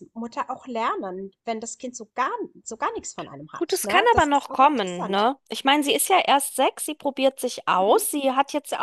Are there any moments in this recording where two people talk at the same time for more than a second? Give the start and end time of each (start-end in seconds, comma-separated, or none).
3.6-5.3